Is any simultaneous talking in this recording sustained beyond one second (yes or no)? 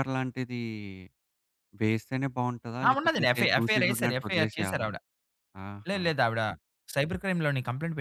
yes